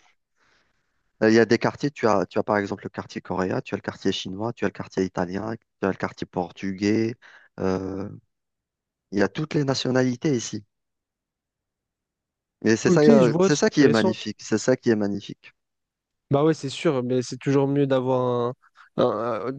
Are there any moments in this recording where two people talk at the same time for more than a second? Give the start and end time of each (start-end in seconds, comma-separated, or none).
12.8-14.2